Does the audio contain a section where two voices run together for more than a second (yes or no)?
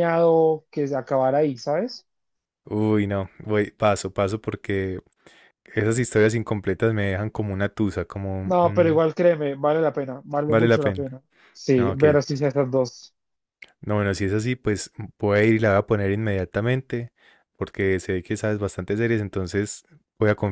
no